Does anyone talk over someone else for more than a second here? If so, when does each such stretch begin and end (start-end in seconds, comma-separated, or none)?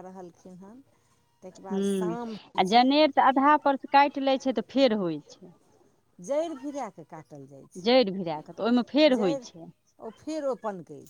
7.8-9.6